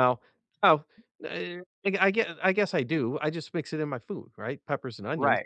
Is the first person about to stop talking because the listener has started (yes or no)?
yes